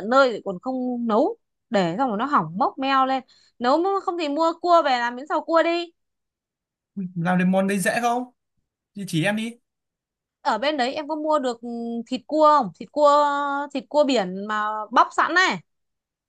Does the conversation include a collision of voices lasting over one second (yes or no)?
no